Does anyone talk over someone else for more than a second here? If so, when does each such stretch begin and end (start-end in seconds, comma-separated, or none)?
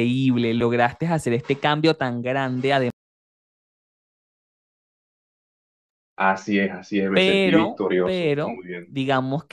7.1-8.9